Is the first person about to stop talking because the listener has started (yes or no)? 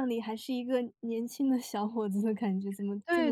yes